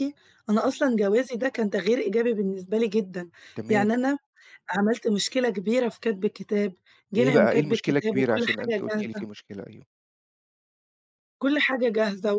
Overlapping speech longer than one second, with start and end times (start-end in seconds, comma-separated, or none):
7.2-9.2